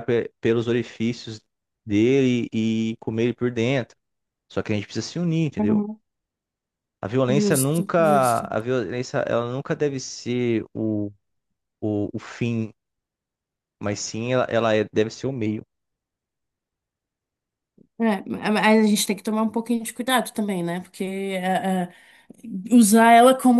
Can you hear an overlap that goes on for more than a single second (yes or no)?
yes